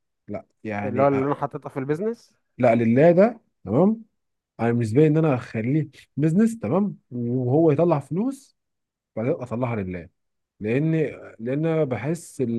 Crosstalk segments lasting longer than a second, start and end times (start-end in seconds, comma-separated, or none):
none